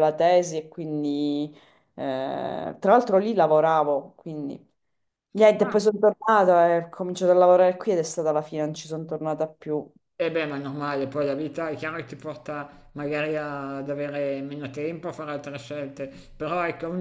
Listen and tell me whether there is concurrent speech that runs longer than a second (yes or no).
no